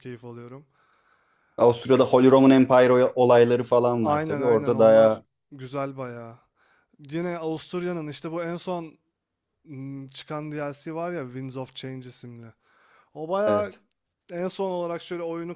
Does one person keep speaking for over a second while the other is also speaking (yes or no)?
yes